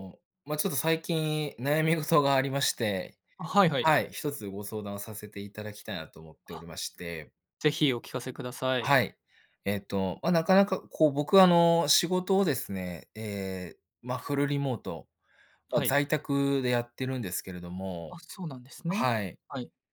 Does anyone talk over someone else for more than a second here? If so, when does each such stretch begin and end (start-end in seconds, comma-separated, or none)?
none